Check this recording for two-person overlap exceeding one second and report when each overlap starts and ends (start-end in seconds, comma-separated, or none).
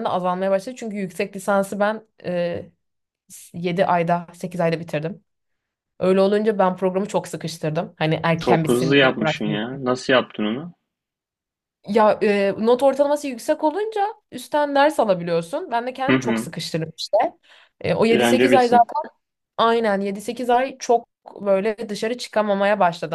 8.3-9.6